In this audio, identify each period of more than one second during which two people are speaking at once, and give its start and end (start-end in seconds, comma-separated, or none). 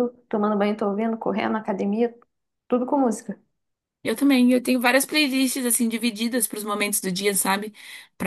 none